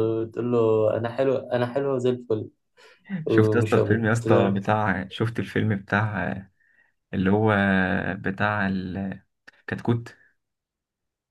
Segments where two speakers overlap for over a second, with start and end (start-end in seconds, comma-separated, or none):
3.3-4.6